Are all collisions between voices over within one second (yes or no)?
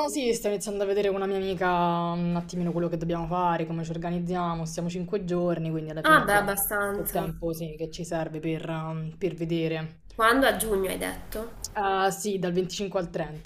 no